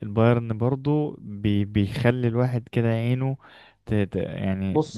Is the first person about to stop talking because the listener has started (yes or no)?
yes